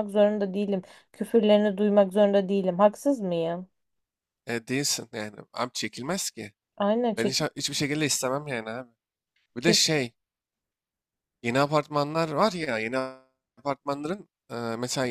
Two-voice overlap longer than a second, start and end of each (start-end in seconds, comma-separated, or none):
none